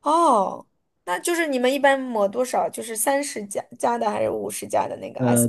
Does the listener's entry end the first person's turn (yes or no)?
yes